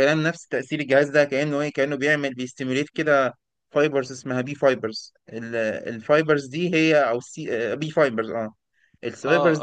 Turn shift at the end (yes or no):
yes